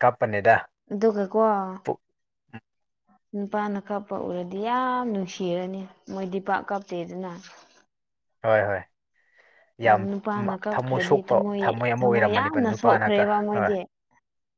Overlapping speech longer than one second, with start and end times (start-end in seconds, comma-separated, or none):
10.7-13.7